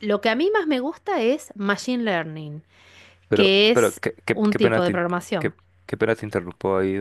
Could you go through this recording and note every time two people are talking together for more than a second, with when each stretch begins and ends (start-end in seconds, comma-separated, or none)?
3.3-5.5